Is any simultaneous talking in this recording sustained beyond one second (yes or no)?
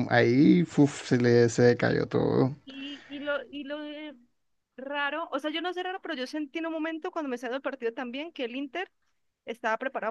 no